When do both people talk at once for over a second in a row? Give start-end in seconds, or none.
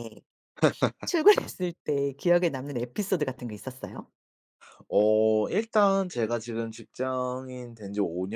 none